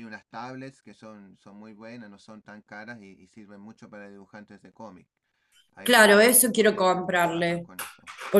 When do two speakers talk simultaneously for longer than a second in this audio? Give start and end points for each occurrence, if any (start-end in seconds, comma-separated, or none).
5.9-7.7